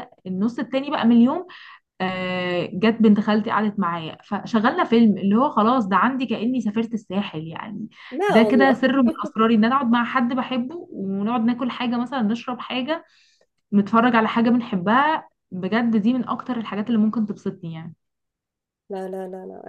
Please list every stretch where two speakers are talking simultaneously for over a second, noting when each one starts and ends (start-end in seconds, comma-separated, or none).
none